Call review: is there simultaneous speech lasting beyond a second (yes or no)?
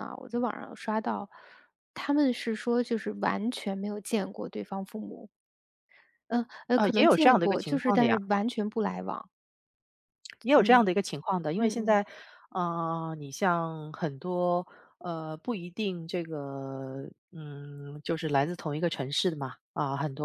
yes